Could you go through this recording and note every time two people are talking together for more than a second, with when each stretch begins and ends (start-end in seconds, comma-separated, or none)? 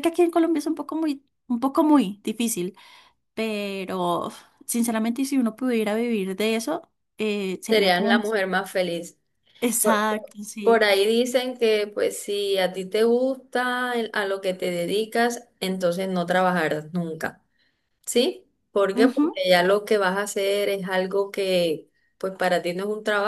none